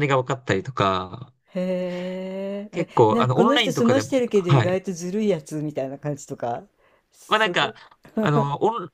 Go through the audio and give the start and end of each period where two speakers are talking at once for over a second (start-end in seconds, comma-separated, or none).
2.7-4.8